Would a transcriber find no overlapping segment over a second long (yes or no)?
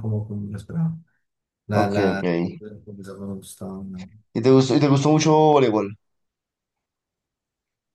yes